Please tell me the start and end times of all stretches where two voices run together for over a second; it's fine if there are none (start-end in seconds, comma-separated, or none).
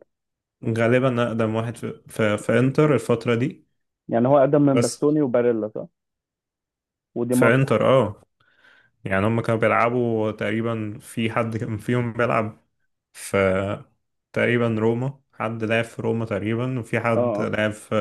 none